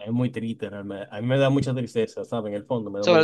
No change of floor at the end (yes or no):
no